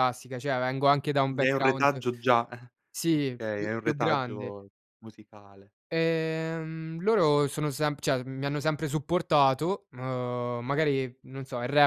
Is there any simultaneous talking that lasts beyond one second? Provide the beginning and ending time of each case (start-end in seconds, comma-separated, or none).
3.1-4.5